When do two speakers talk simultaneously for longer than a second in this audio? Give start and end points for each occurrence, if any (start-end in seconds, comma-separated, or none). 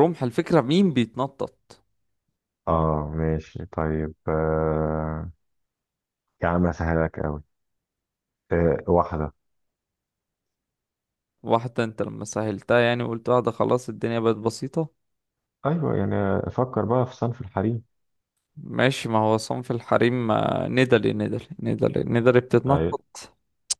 none